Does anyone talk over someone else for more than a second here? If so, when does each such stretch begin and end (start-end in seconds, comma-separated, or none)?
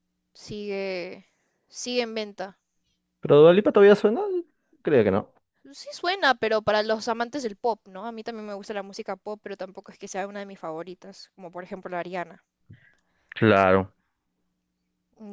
none